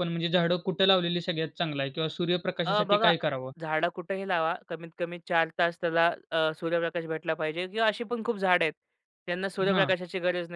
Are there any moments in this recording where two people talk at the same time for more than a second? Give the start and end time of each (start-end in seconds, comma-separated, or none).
none